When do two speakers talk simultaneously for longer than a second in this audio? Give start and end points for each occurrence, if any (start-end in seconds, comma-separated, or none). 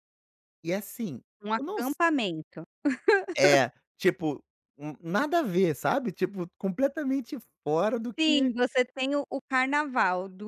none